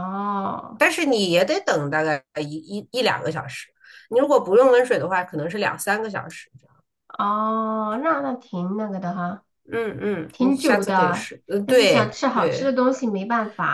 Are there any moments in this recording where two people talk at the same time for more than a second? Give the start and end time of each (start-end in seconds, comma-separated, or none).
10.3-12.8